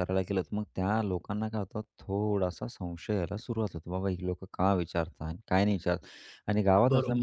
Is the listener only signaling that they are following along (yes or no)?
yes